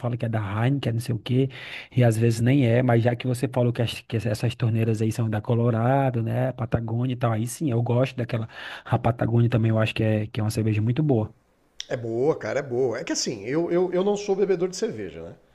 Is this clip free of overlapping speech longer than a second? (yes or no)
yes